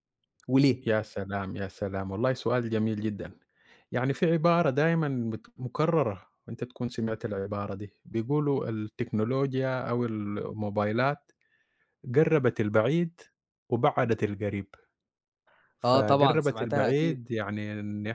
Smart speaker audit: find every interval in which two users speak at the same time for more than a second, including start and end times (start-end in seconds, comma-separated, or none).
15.8-17.3